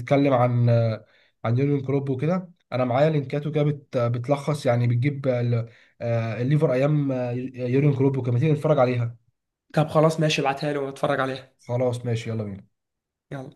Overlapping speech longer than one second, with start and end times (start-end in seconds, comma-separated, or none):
none